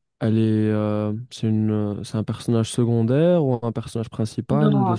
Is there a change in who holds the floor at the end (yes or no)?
yes